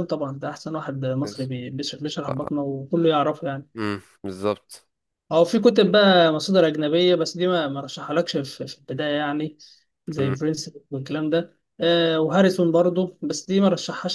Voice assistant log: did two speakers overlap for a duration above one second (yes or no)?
no